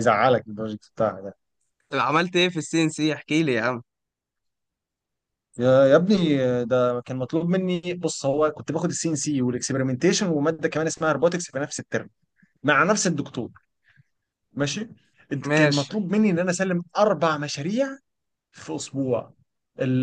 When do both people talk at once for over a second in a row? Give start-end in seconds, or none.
none